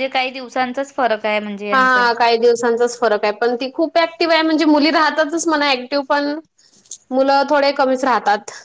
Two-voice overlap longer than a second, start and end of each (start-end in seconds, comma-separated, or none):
none